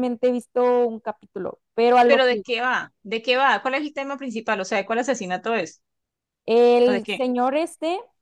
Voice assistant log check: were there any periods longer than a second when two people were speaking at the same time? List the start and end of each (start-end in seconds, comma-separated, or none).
none